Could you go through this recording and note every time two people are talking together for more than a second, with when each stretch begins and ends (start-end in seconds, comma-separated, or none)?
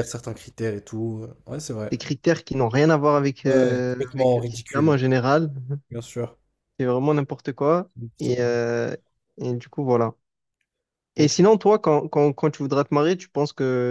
3.5-5.0